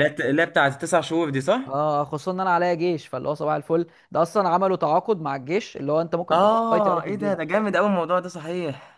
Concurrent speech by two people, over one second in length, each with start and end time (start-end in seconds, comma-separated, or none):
6.3-7.5